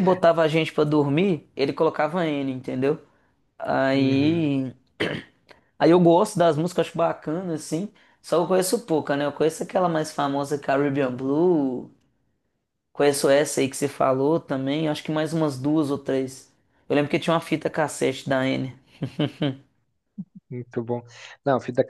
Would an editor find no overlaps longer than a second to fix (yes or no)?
yes